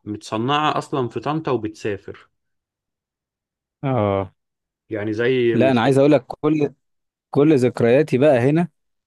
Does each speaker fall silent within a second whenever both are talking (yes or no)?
yes